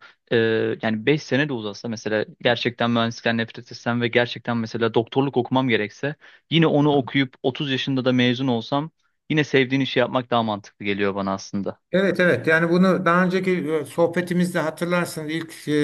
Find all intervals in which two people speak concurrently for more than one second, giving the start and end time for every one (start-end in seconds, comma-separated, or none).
none